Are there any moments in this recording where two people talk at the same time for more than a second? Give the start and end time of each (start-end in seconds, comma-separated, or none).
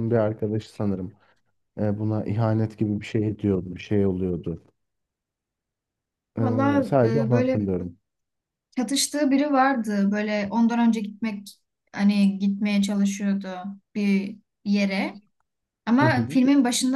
6.4-7.6